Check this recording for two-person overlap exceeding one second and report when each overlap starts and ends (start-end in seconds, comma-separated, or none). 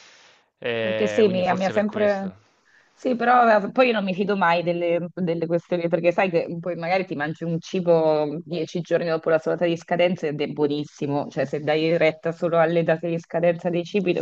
0.8-2.3